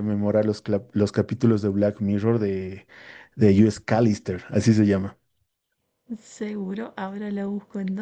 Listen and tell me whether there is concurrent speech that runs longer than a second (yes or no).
no